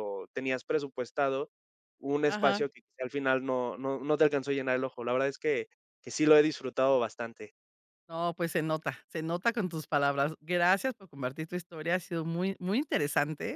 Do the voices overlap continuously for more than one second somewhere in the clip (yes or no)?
no